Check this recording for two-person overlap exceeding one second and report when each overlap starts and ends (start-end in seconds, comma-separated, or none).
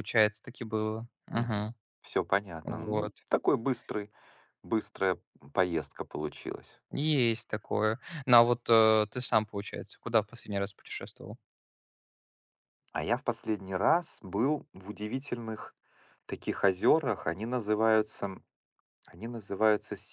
none